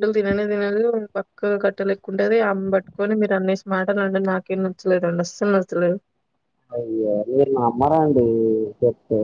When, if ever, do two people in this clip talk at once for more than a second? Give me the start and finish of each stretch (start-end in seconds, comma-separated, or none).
none